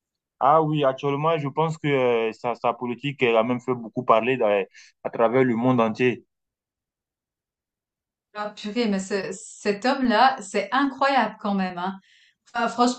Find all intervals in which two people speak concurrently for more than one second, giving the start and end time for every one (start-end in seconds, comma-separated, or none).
none